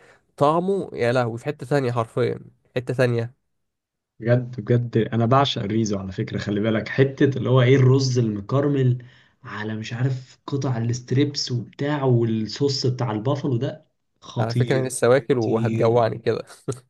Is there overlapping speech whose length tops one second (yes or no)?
yes